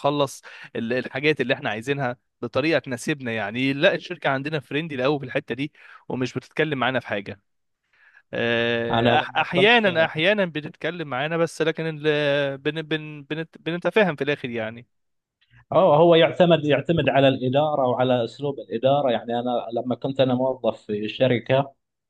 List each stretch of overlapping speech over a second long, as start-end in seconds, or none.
8.9-10.1